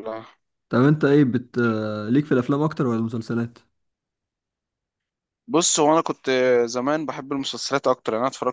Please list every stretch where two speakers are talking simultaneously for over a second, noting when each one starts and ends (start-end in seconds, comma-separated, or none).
none